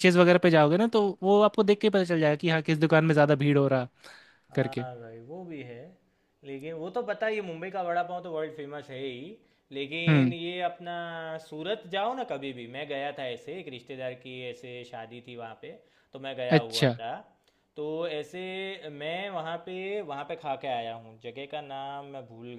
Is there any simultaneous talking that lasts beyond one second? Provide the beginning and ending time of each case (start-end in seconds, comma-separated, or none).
none